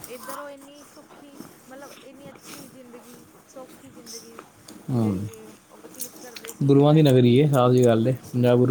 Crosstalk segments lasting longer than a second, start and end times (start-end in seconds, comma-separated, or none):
none